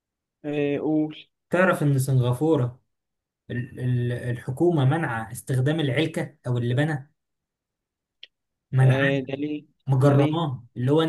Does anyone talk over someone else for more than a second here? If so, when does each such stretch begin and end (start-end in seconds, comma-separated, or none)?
none